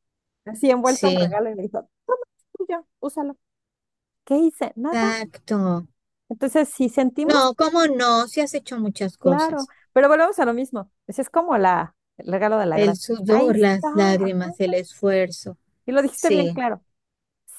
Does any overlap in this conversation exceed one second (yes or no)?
yes